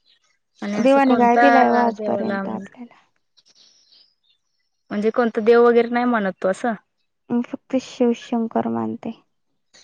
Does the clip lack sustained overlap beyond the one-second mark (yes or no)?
no